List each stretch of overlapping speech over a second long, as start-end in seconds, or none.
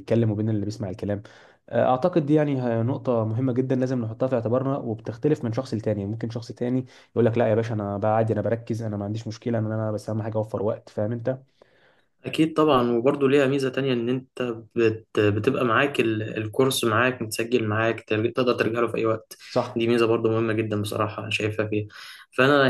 none